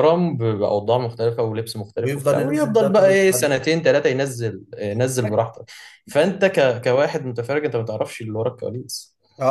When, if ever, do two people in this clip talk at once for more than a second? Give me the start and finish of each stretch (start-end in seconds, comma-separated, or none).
2.0-3.5